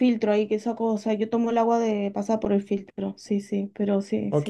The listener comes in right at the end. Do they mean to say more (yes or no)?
yes